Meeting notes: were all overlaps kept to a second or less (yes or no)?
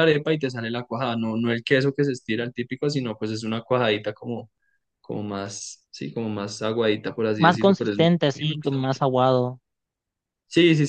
no